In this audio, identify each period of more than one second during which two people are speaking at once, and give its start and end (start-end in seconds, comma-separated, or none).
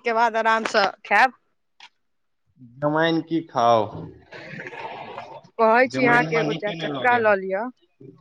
6.0-7.6